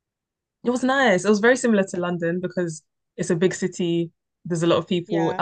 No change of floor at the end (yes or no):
yes